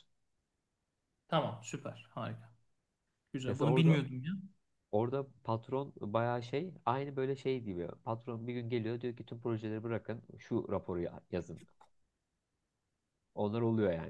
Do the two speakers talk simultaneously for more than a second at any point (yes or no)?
no